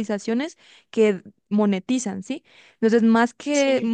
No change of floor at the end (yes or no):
yes